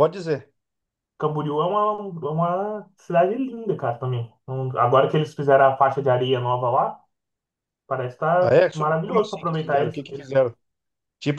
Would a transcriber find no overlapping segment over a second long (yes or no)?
no